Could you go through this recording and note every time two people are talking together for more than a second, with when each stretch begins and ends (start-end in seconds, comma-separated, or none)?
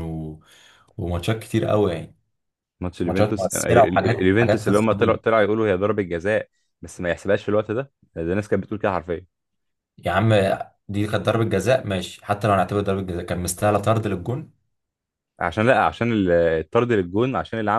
3.0-4.7